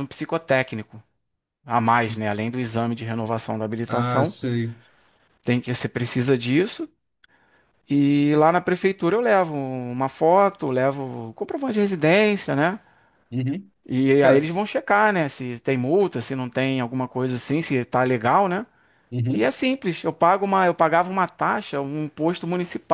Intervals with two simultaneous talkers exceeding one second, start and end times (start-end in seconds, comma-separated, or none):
none